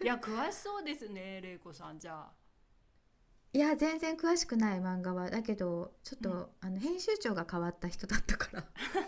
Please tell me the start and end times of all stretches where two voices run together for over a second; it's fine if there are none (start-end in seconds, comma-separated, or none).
none